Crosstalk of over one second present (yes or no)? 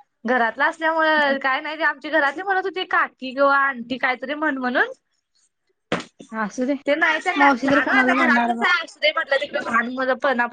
yes